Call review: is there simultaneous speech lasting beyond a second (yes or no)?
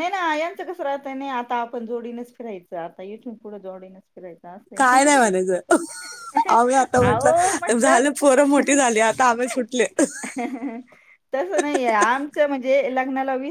yes